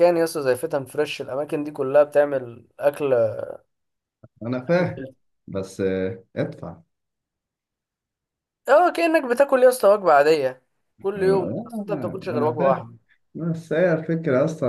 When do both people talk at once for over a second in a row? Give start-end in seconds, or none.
11.2-12.9